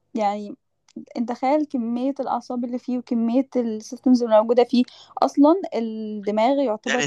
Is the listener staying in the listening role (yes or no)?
no